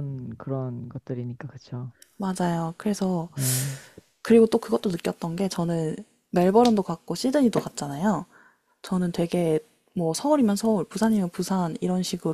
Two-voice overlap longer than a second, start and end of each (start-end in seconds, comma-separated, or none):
none